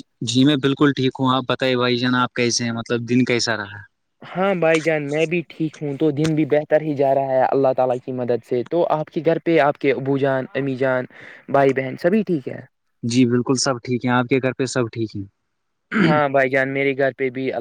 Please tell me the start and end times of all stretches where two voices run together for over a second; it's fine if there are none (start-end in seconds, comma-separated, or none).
none